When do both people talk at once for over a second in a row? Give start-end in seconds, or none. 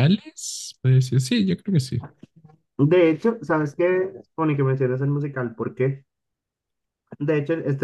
none